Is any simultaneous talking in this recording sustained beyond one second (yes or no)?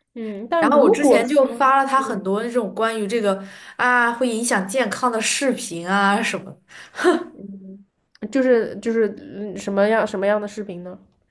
yes